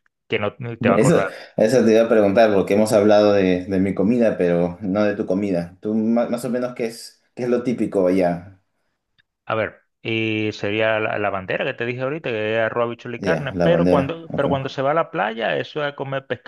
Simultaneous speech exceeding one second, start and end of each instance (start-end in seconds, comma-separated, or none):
13.2-14.5